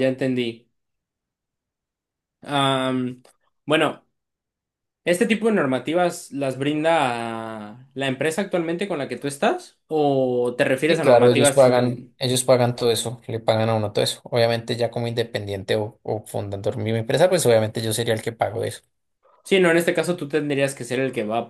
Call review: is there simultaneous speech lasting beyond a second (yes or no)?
yes